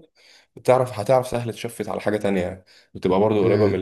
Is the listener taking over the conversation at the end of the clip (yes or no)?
yes